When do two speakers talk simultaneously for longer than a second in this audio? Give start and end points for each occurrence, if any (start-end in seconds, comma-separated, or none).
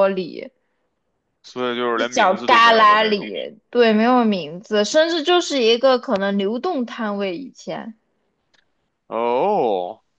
1.9-3.3